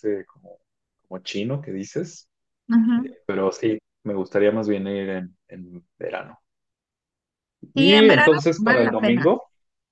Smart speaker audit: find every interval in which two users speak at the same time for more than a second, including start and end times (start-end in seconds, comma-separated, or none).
7.7-9.3